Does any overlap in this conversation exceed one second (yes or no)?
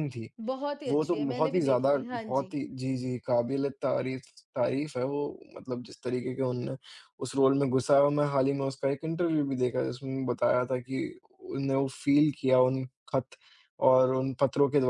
yes